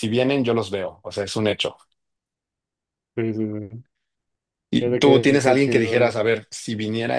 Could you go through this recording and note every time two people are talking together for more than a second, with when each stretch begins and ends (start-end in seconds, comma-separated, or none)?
4.8-6.1